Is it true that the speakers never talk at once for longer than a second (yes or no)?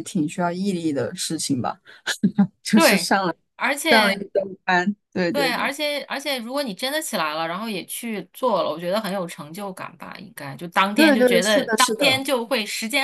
no